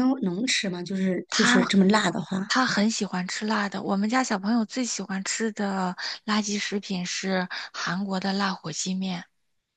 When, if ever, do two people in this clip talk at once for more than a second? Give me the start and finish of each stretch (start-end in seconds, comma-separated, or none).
none